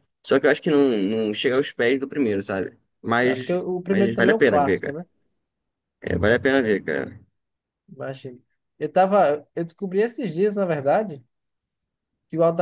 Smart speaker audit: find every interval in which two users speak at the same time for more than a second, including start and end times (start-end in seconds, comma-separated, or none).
3.3-5.0